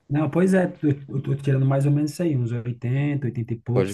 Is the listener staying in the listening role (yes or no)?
no